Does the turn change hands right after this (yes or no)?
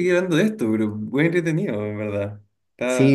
yes